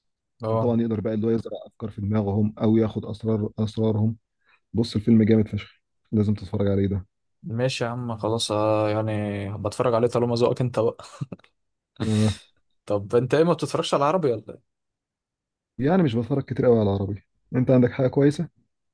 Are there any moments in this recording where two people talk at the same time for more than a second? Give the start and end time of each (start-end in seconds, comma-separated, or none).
none